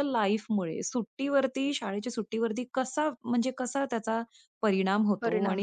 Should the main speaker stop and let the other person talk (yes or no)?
no